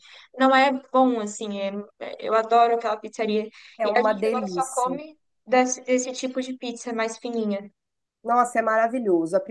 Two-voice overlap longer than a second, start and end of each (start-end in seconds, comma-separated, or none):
3.8-5.0